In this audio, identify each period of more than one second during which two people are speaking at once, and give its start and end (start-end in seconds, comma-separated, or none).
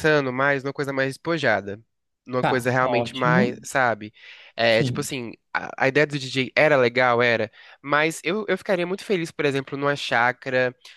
2.4-3.6